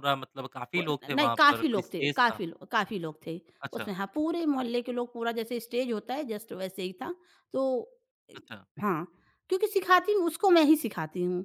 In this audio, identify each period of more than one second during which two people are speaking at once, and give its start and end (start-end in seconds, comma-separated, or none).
0.8-2.4